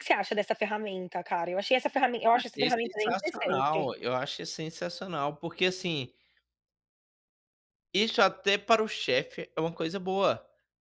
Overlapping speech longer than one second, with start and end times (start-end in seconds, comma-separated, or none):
2.3-3.9